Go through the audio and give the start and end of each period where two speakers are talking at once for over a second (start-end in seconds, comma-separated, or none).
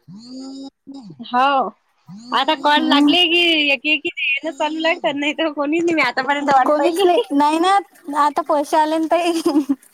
none